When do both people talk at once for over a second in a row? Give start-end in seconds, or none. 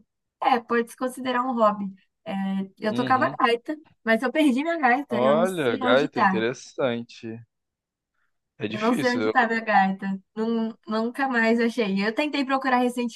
5.1-6.5